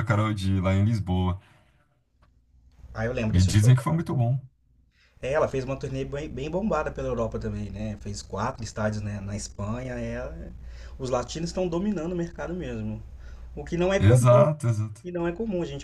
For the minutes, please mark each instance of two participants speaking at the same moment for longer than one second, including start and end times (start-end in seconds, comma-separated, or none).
none